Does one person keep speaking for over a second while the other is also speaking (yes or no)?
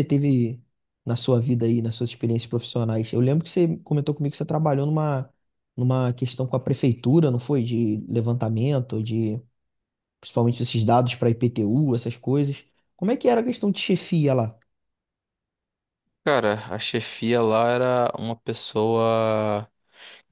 no